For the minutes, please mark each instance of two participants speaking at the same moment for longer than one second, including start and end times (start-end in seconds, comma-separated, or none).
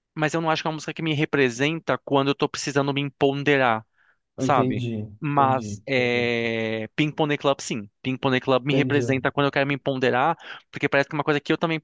4.4-6.3